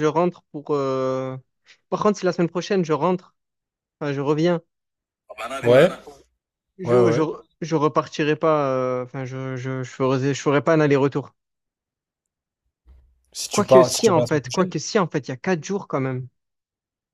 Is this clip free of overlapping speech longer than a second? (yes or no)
no